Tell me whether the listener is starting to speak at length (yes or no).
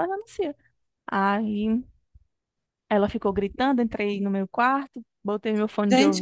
yes